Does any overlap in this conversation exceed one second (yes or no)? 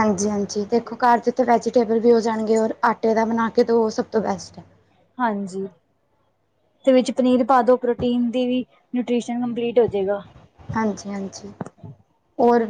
no